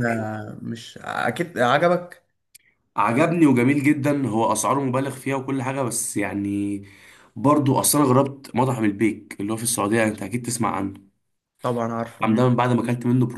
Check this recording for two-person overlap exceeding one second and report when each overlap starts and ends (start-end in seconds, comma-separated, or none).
none